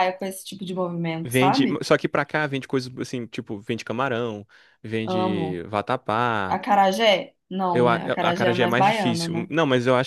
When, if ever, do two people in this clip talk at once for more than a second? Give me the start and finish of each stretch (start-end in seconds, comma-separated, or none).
7.7-9.5